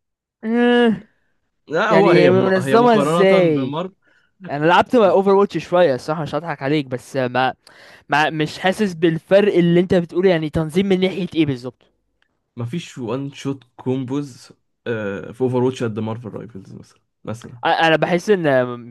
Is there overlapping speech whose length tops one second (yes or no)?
yes